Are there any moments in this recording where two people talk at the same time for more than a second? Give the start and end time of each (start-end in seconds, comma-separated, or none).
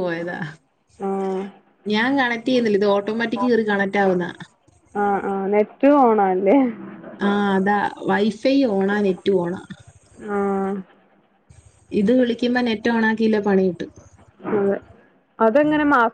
none